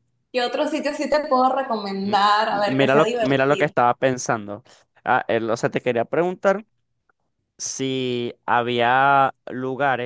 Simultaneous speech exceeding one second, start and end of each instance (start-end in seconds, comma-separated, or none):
2.0-3.7